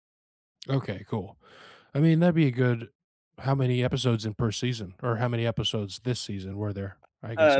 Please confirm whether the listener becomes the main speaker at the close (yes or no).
yes